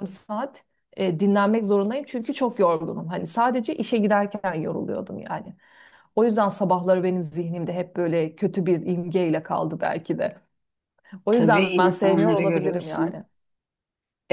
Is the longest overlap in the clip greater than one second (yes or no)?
yes